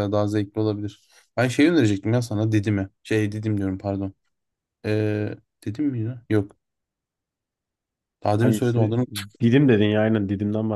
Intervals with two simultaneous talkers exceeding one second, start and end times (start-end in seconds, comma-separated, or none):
none